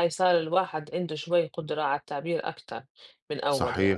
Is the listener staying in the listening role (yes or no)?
no